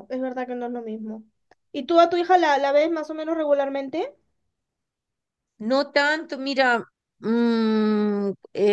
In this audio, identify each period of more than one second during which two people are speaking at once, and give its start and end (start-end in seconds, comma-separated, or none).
none